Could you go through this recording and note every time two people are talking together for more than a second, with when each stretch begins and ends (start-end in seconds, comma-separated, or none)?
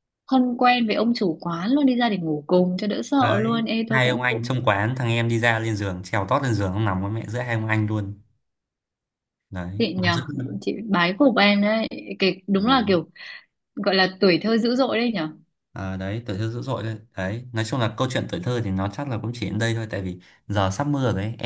3.2-4.5